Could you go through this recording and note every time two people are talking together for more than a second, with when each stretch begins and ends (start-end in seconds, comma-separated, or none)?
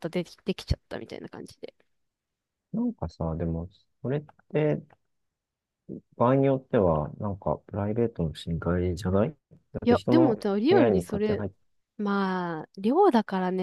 9.8-11.4